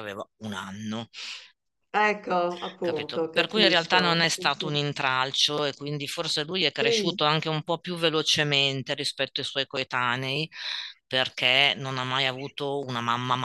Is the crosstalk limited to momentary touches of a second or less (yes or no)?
no